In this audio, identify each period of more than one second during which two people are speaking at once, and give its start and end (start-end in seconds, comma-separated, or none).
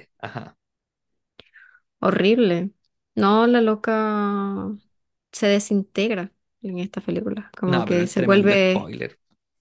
7.7-8.9